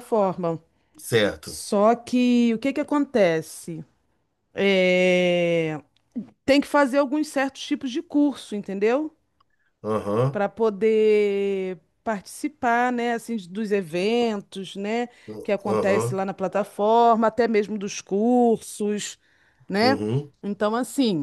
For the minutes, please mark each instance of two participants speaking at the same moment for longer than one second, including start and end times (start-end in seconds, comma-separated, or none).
none